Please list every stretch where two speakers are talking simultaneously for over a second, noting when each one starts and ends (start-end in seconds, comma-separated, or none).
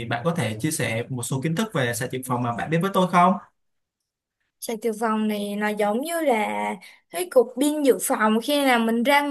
none